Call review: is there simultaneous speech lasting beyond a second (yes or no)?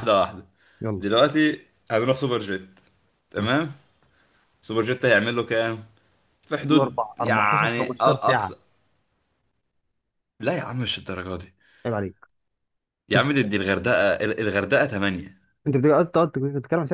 yes